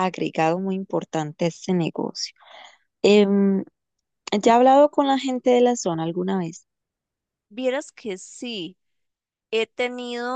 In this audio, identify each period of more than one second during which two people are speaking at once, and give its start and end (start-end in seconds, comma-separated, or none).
none